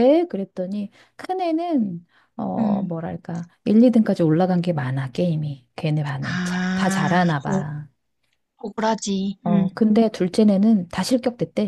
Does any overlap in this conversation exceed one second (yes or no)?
yes